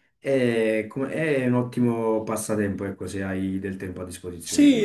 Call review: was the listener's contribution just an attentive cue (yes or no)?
no